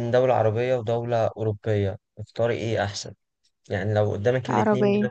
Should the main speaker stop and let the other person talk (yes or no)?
no